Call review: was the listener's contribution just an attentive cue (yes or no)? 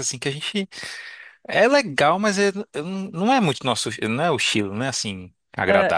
no